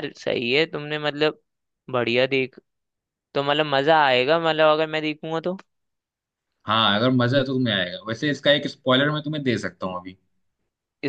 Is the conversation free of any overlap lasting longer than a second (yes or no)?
yes